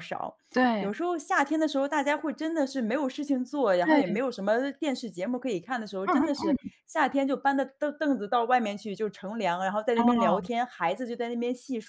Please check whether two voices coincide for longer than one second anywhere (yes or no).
no